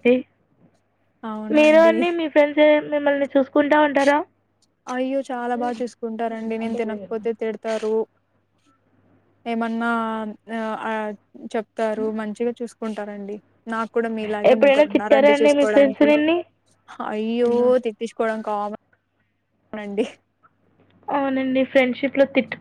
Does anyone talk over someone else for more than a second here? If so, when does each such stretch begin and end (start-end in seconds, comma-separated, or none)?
14.5-16.1